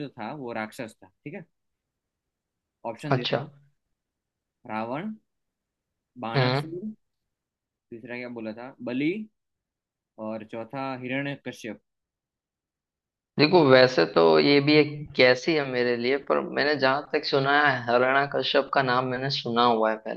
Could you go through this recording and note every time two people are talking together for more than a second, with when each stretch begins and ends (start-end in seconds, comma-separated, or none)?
none